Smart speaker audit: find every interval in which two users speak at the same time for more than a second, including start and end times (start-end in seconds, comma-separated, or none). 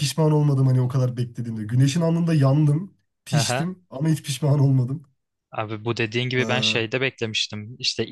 none